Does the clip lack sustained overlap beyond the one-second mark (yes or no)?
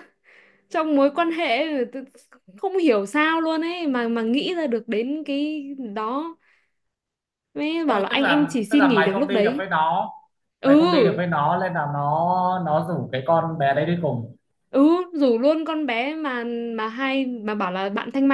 no